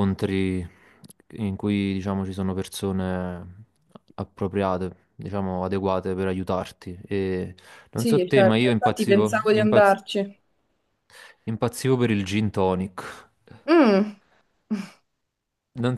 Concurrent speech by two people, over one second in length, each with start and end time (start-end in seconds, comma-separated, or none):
7.9-10.0